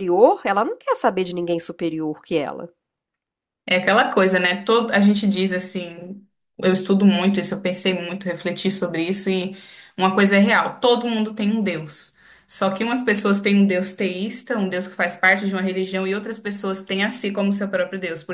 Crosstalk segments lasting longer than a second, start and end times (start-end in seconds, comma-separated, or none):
none